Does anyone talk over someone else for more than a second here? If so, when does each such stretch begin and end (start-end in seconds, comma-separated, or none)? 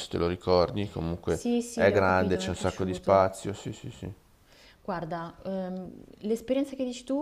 1.2-3.3